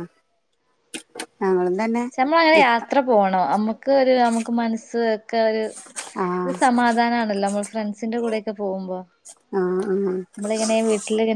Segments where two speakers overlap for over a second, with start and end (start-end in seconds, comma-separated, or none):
none